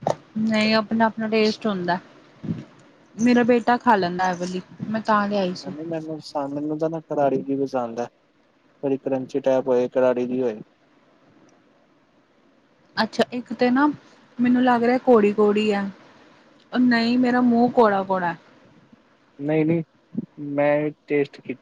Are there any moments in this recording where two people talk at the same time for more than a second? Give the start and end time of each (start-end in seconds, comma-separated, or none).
none